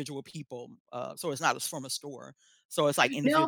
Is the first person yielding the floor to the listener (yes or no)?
yes